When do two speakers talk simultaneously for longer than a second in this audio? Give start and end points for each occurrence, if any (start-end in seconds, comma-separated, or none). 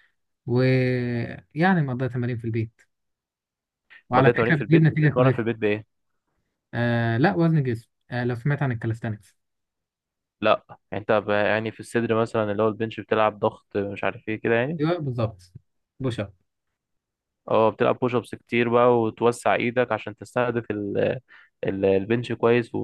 4.1-5.4